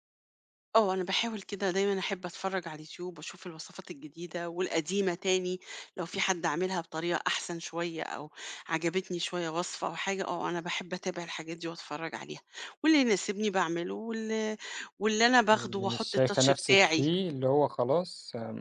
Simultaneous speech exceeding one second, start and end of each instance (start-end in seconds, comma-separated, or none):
15.5-17.0